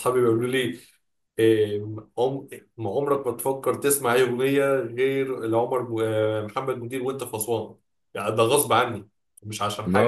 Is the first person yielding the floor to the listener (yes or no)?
yes